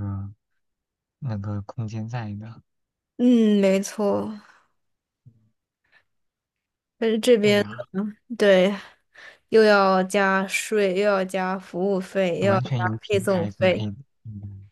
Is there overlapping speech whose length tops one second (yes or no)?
yes